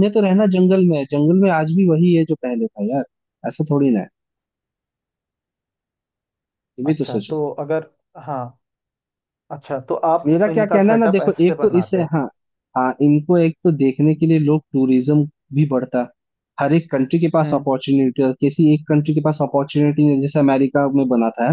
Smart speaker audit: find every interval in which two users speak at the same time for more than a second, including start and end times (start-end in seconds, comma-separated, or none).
10.3-12.1